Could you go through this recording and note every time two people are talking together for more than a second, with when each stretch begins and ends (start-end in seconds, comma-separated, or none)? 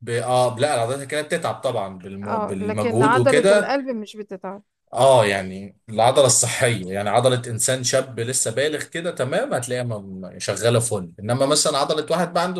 2.2-3.8